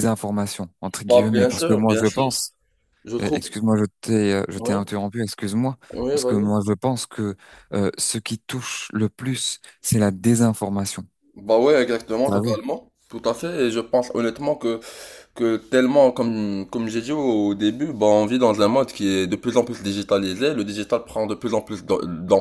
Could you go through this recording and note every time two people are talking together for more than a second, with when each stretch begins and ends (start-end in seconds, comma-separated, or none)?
1.1-2.5